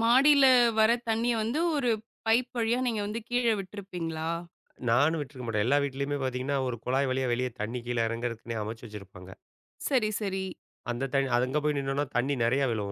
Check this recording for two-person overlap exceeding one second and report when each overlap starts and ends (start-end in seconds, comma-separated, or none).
none